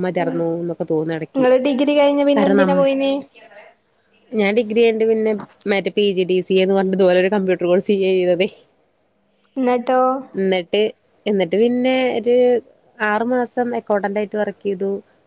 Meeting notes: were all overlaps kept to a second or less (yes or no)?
yes